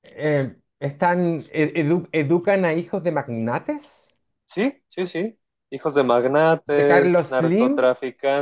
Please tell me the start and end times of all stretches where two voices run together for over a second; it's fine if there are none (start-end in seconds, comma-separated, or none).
6.7-7.9